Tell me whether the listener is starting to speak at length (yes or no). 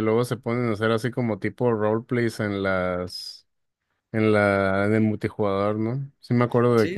yes